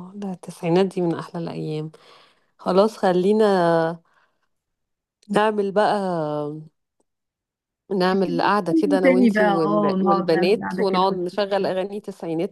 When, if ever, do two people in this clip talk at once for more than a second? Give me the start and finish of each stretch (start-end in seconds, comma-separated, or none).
8.1-11.1